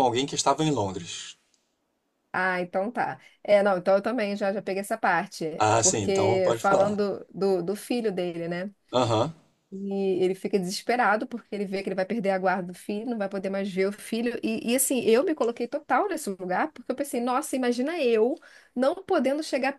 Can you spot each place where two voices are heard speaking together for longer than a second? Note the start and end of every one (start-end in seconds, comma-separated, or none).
5.6-7.0